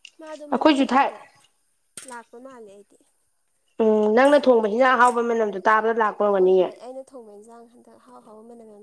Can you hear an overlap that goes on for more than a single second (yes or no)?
no